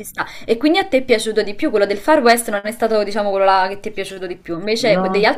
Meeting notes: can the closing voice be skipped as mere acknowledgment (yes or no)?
yes